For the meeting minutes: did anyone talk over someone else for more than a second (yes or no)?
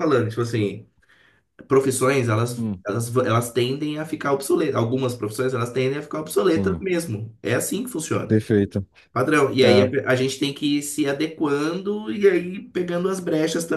no